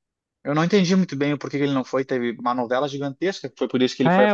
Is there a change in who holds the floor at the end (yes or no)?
yes